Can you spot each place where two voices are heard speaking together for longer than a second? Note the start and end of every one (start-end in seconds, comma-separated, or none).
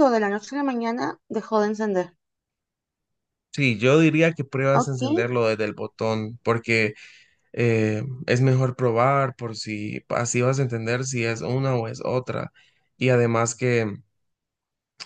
none